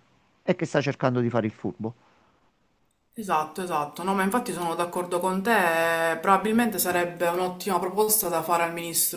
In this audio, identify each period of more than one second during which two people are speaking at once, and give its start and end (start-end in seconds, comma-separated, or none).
none